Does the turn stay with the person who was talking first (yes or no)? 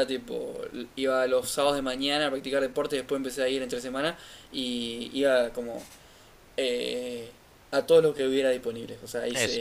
yes